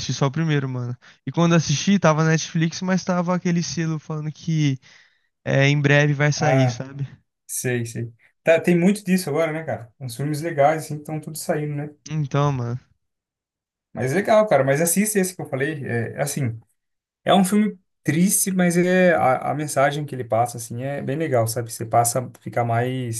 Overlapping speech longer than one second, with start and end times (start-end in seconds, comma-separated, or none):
none